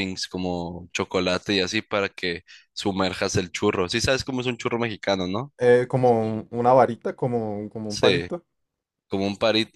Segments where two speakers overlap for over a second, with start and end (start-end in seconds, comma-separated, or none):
none